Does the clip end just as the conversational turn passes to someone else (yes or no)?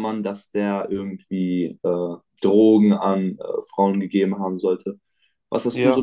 no